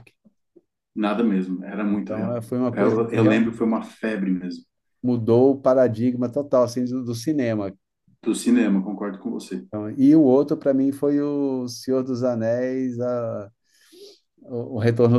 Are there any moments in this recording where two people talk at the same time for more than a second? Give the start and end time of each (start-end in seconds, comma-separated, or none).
1.9-3.7